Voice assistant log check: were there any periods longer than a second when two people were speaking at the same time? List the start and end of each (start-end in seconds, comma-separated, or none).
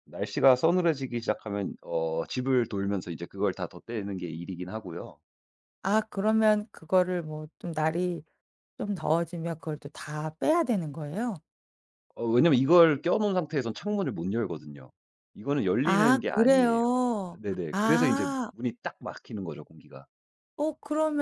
15.8-18.5